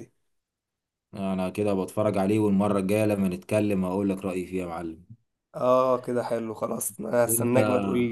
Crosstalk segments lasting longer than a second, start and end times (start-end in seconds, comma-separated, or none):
none